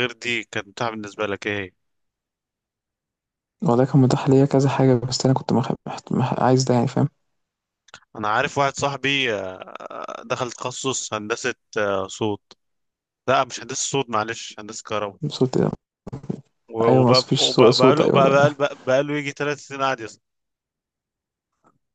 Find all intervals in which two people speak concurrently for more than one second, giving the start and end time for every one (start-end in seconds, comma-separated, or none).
16.9-18.5